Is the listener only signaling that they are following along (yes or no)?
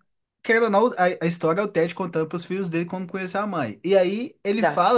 yes